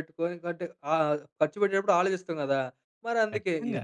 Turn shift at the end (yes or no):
no